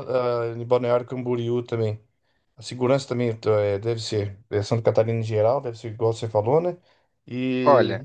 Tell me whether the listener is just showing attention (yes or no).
yes